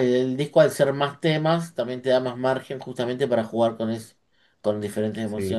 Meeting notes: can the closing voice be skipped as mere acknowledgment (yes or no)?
yes